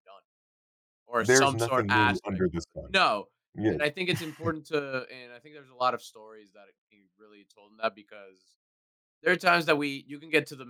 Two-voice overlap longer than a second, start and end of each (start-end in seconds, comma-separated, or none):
1.2-3.0